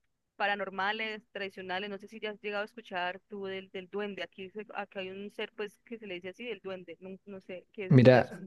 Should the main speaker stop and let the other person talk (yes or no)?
yes